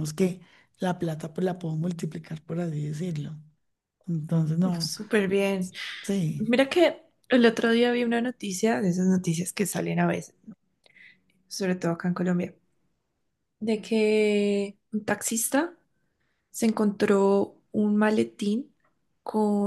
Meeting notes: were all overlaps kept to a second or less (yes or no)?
yes